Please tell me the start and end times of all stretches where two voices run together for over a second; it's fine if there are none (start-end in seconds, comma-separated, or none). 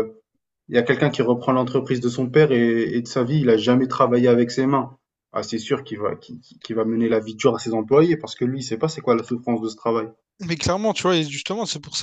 none